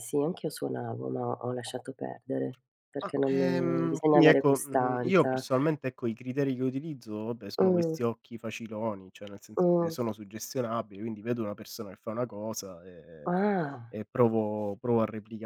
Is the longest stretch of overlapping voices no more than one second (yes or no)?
no